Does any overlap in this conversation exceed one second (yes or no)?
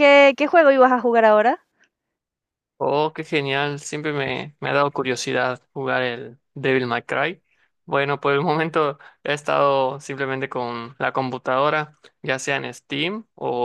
no